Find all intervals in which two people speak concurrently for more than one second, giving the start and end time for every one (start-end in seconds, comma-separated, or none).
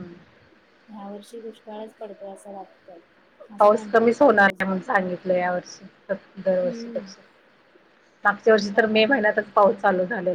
none